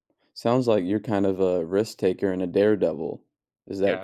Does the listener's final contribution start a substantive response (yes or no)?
no